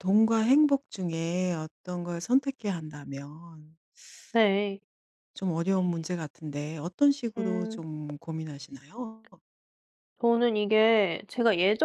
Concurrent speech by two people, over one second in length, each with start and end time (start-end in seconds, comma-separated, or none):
none